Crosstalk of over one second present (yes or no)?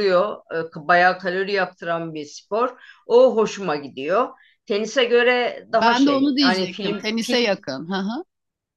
yes